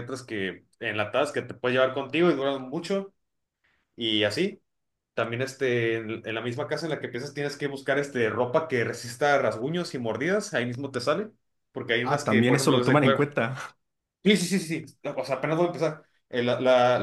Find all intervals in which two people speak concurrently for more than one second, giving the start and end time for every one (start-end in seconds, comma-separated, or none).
12.0-13.3